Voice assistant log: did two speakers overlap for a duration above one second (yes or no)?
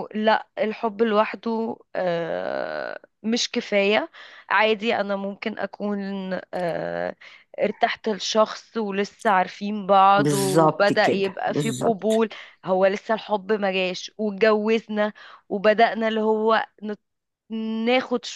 yes